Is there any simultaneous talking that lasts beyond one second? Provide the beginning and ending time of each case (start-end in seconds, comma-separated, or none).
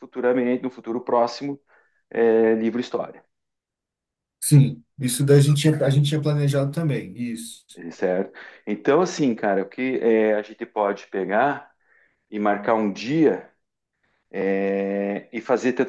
none